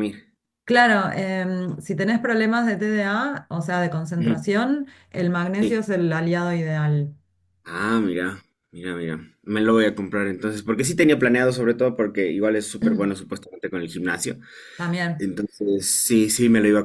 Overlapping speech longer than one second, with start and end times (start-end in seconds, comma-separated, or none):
none